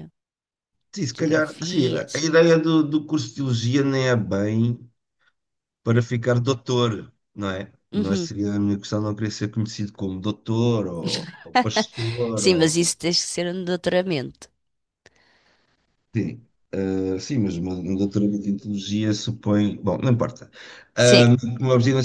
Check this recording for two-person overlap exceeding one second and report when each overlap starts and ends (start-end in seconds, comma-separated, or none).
1.1-2.3